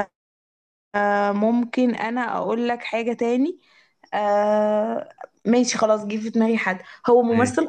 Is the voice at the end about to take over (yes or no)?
no